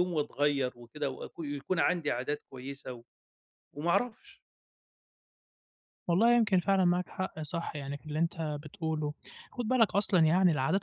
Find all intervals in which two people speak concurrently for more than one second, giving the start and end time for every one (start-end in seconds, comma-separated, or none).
none